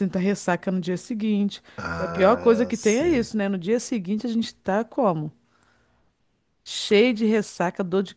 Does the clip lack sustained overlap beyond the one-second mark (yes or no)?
no